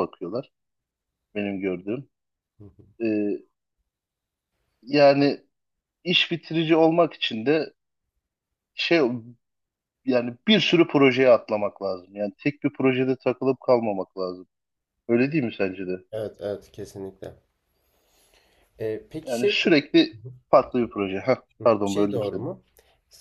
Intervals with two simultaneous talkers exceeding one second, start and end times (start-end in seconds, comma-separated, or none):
none